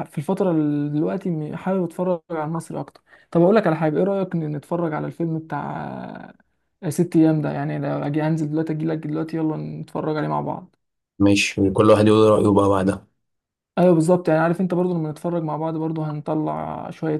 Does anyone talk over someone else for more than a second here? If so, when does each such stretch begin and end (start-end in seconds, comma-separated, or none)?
none